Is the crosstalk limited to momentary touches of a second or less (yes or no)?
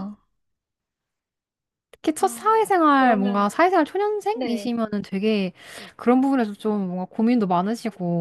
no